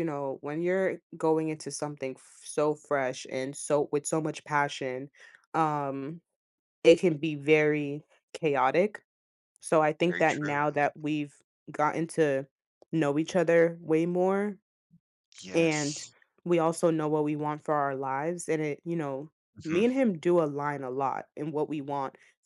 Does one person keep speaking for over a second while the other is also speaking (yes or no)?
no